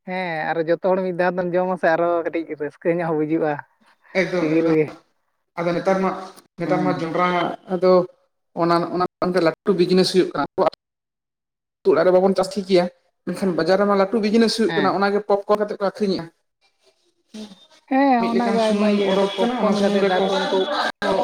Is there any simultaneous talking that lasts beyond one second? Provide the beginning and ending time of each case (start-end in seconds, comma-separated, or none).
18.2-20.2